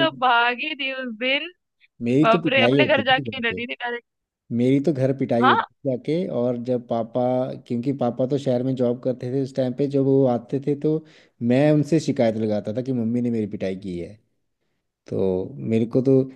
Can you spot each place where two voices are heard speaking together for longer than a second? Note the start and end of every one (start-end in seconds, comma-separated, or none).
2.2-3.6